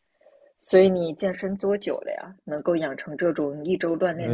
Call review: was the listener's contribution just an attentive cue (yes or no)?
no